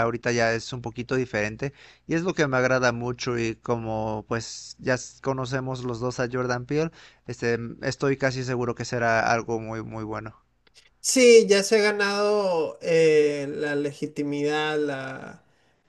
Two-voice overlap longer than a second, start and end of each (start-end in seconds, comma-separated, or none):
none